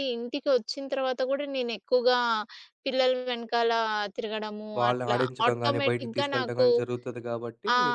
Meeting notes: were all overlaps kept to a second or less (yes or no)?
no